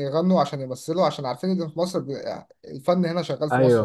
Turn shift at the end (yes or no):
yes